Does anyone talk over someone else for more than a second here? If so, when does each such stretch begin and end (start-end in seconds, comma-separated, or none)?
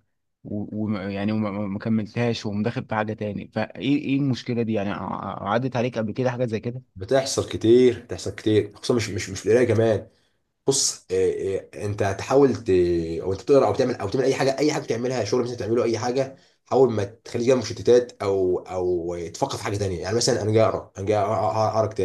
none